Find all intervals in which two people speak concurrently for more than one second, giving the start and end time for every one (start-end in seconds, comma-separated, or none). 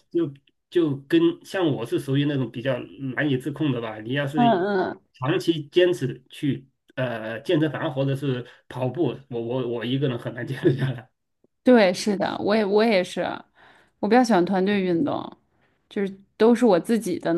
none